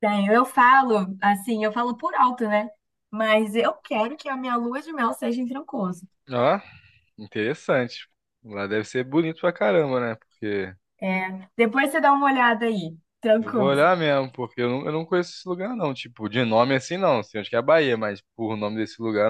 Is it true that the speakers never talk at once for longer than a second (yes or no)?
yes